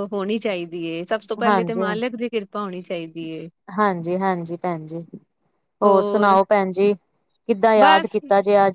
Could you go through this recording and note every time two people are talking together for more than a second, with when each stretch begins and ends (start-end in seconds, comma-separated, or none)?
none